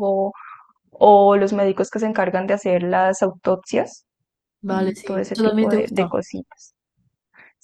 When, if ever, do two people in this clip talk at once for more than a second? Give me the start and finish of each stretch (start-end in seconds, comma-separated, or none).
4.7-6.1